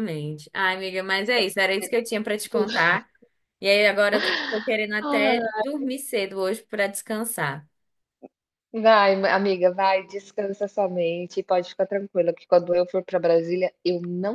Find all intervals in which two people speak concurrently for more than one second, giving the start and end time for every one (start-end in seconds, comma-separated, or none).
none